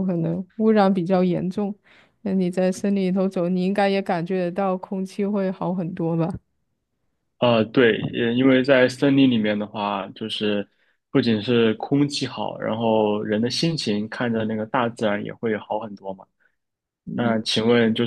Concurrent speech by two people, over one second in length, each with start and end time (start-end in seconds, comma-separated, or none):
none